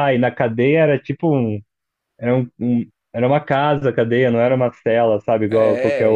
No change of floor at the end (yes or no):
no